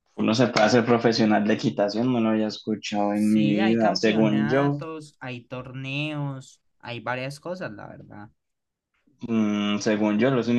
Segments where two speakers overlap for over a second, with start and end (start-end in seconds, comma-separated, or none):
3.1-4.8